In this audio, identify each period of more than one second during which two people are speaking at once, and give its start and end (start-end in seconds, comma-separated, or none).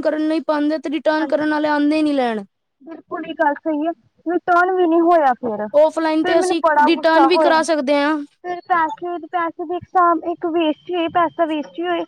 5.8-7.6